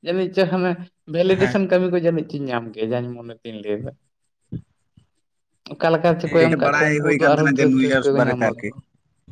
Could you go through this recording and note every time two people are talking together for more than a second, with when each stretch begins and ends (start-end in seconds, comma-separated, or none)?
6.4-8.7